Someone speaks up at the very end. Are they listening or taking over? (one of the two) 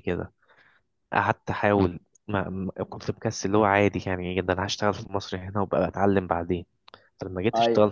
listening